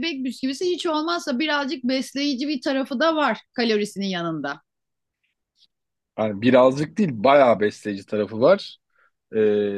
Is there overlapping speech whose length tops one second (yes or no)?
no